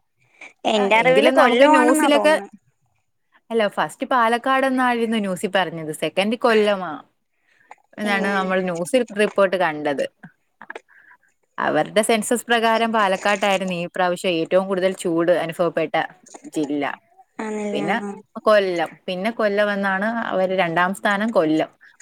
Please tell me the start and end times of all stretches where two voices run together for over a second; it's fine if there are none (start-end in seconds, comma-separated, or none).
1.0-2.3